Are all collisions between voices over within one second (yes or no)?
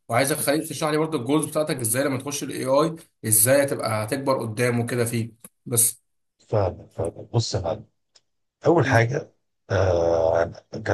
yes